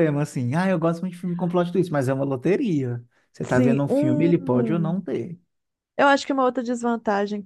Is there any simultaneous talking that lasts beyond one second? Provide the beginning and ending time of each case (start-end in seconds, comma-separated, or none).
3.5-5.0